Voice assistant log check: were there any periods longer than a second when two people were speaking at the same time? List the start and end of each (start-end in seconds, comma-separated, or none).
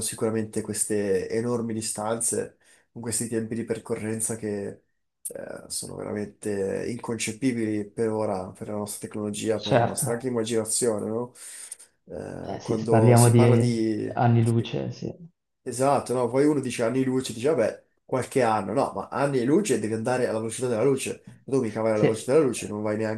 12.4-14.8